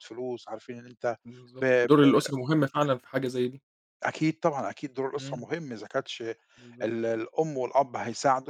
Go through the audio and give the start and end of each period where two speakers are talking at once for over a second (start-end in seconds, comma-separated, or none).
none